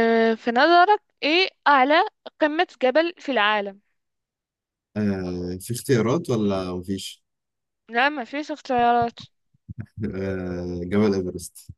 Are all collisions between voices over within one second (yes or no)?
yes